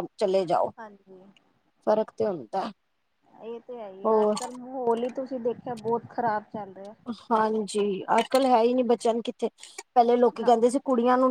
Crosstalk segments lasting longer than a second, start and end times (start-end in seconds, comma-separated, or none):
none